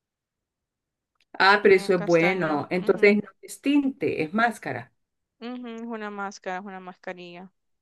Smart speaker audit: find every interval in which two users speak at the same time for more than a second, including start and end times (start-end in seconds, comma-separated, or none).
1.7-3.1